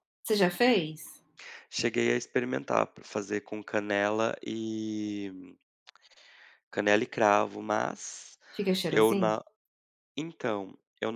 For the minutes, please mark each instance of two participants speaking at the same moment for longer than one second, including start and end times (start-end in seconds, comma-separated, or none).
none